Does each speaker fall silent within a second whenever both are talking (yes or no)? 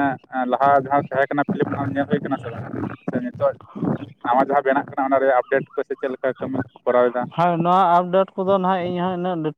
yes